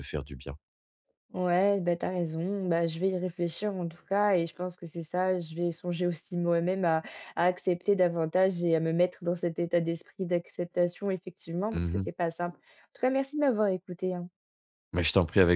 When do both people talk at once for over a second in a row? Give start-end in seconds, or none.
none